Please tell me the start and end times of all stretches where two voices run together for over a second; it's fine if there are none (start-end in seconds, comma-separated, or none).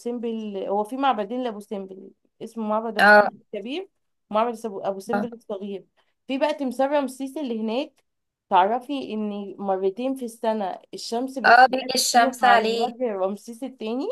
11.4-12.9